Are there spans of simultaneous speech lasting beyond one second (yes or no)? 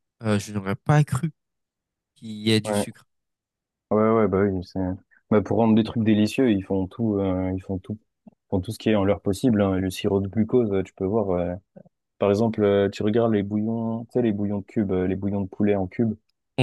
no